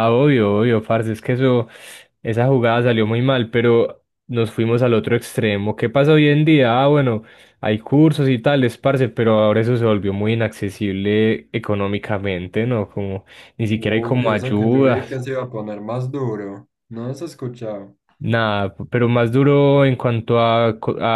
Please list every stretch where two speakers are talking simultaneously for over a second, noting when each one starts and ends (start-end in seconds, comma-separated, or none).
13.7-15.2